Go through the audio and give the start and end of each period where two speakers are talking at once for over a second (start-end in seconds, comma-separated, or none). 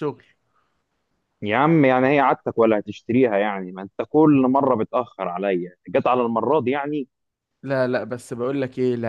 none